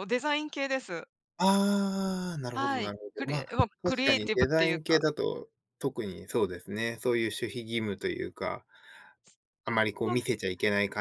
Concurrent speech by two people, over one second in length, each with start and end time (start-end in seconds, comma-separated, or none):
2.5-5.1